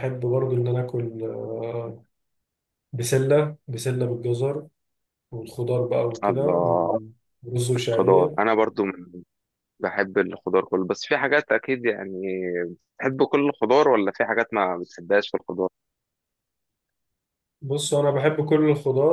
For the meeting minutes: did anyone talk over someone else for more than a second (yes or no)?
no